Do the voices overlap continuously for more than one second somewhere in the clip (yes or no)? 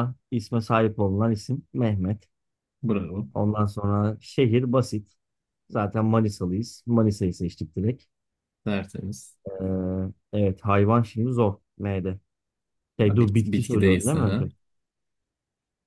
yes